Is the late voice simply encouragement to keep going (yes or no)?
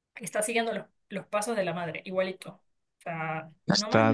no